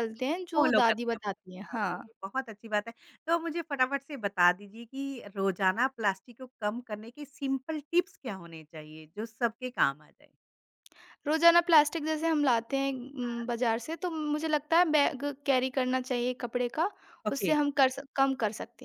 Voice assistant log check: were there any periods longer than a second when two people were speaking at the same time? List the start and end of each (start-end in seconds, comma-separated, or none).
0.6-2.0